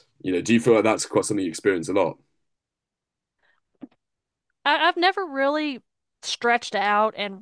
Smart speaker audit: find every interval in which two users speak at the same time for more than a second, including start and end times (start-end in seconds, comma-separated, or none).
none